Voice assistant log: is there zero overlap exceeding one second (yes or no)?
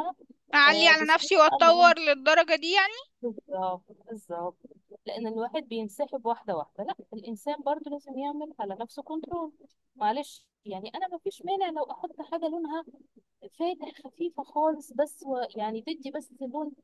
no